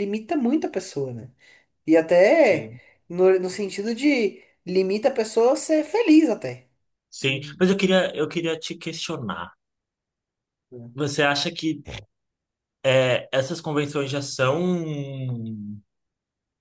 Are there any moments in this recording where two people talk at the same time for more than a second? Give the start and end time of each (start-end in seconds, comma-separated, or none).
none